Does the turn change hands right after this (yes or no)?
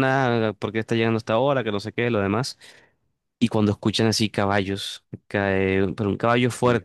no